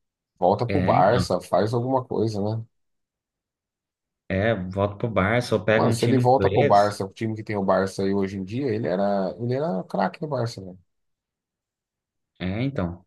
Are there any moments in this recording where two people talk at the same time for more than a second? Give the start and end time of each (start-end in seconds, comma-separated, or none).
5.7-7.0